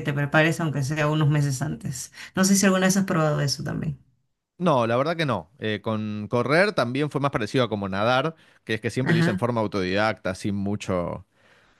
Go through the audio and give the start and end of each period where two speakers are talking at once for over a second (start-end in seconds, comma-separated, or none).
none